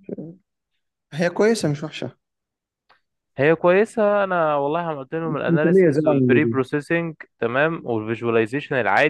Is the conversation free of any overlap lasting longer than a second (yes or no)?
no